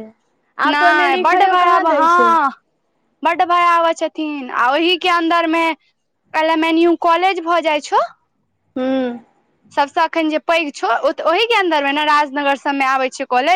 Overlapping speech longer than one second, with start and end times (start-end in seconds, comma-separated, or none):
0.7-2.3